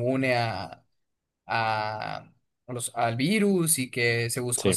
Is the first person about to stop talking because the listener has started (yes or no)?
no